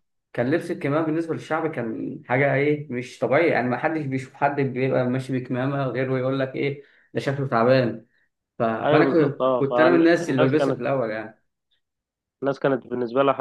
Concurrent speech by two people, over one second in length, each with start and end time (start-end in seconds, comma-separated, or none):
8.8-10.8